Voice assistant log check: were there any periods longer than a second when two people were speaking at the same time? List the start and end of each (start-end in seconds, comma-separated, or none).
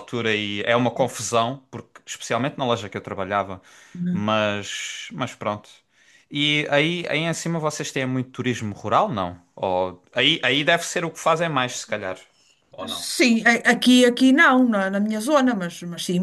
none